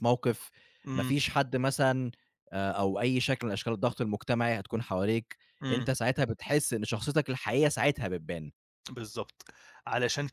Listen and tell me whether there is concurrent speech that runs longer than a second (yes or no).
no